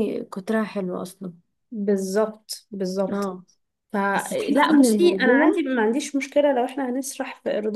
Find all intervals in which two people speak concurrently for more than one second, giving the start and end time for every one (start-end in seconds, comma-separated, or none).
4.1-5.6